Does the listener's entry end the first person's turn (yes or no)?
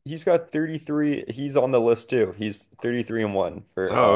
yes